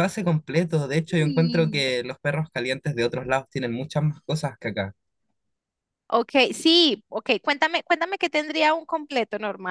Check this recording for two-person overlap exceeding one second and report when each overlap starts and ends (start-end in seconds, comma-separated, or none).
0.7-1.9